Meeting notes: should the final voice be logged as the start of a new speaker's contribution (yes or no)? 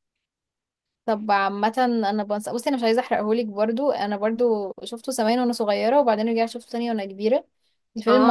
yes